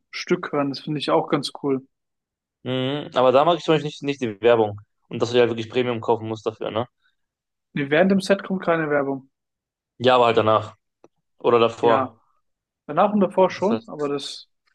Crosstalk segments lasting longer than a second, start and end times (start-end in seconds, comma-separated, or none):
none